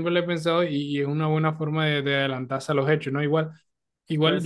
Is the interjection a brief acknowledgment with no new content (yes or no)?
yes